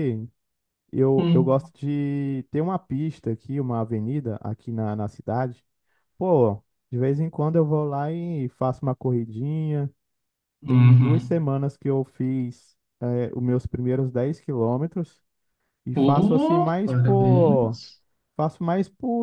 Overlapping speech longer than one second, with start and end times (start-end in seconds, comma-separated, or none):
15.9-17.8